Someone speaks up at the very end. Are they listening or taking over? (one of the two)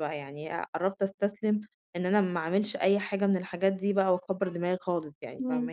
taking over